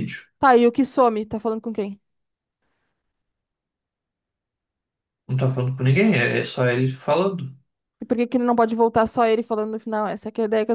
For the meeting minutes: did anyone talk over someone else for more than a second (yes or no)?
no